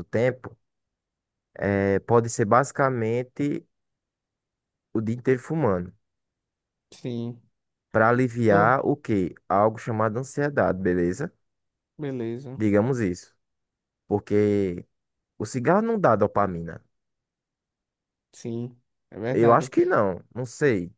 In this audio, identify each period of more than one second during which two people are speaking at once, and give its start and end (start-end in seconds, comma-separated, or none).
none